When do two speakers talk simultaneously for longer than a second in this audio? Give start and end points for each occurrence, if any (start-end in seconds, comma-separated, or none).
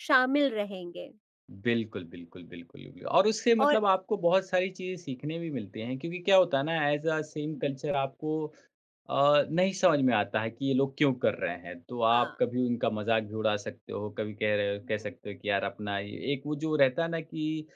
none